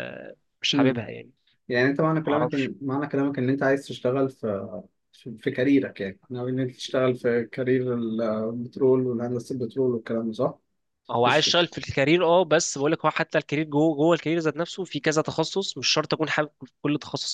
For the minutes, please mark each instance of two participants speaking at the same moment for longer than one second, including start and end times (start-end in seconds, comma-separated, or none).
none